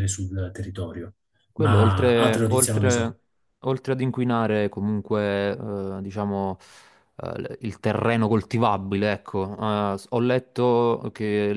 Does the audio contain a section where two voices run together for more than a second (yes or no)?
yes